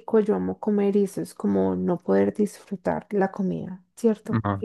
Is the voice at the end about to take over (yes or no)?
yes